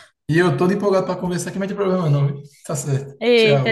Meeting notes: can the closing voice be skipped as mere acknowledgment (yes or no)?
no